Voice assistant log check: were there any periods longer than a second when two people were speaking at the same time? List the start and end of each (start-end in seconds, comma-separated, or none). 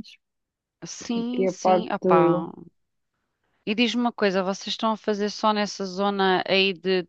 1.1-2.5